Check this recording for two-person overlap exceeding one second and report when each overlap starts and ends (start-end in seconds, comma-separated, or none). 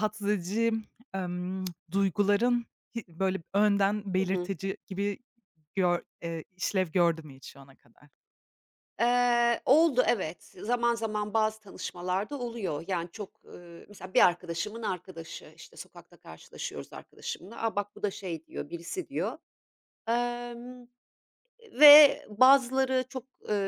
none